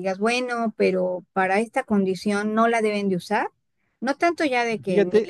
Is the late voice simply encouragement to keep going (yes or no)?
yes